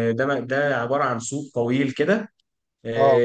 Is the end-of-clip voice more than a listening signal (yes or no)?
no